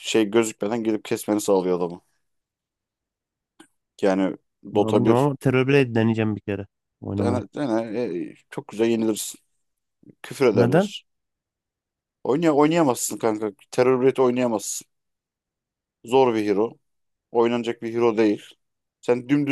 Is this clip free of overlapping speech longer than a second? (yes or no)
yes